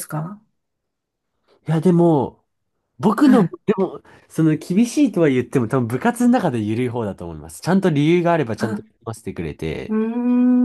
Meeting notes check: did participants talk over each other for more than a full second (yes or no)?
no